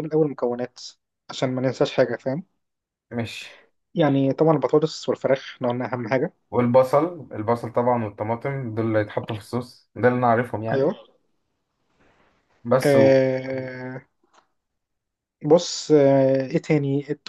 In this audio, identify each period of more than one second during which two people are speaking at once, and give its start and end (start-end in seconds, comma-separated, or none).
none